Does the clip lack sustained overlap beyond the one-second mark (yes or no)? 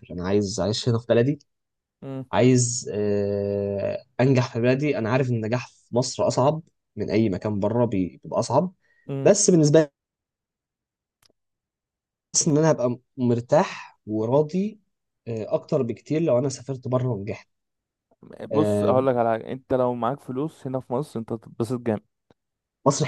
yes